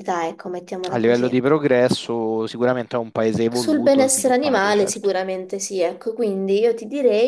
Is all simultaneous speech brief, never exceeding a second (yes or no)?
no